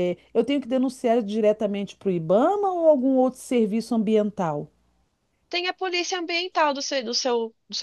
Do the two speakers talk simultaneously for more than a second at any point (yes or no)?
no